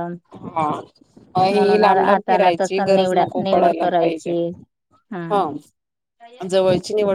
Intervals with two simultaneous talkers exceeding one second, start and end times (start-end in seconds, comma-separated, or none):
1.5-4.3